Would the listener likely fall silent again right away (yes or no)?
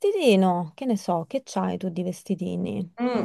no